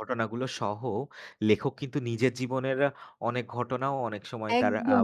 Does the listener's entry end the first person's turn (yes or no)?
yes